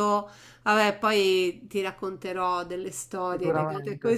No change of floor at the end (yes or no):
yes